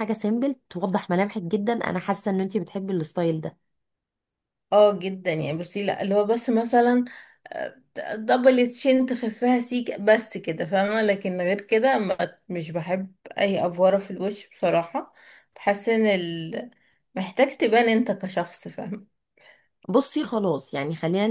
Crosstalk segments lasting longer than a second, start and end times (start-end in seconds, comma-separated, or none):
none